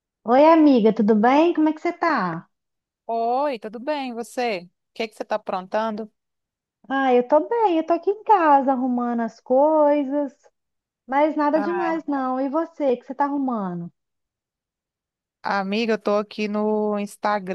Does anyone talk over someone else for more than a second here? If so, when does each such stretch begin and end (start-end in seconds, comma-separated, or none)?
none